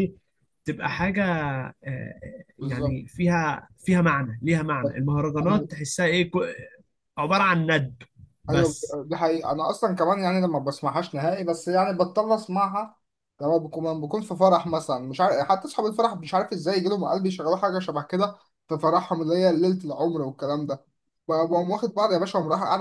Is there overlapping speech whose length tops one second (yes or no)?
no